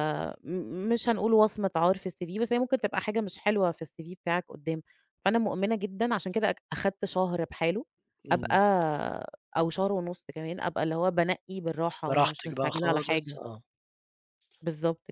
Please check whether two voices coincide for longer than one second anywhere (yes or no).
yes